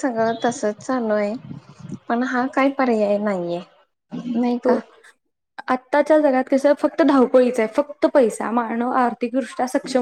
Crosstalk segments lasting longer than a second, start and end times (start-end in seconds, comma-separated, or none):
none